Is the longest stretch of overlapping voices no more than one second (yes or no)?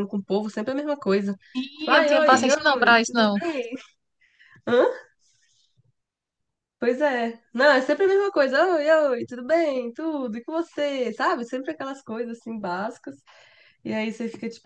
no